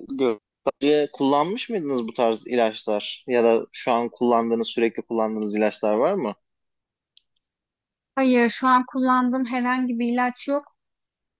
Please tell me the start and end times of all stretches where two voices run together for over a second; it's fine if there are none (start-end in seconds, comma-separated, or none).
none